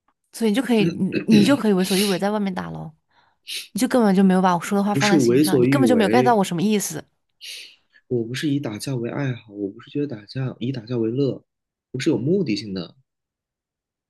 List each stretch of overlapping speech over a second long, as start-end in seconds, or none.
4.9-6.4